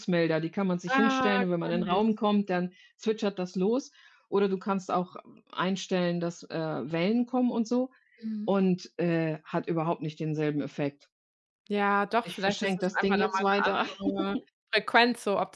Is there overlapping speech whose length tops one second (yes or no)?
yes